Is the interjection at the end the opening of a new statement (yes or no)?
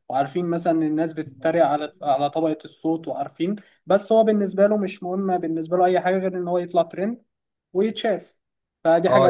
yes